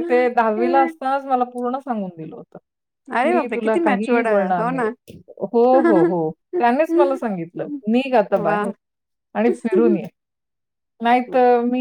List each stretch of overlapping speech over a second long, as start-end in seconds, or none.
3.2-4.8